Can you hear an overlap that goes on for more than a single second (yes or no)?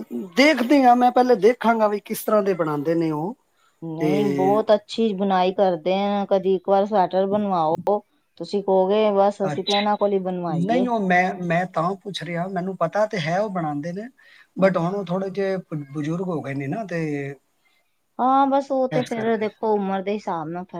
no